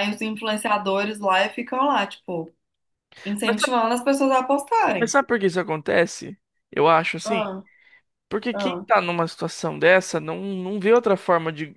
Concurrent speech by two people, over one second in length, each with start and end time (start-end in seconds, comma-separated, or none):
none